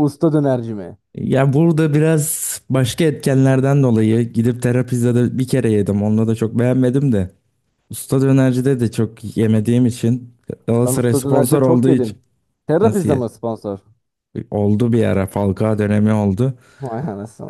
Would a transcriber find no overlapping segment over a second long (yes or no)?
no